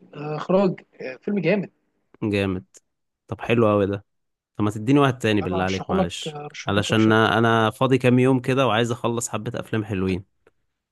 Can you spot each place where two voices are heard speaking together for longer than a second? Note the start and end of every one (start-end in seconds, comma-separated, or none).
5.4-7.3